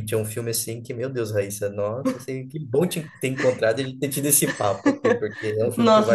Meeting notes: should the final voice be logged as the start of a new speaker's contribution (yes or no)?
no